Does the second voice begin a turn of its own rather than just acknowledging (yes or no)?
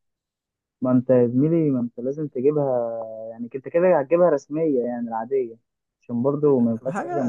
yes